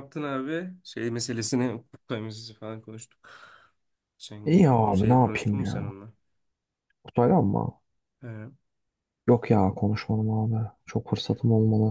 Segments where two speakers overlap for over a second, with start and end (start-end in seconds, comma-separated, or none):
4.4-5.9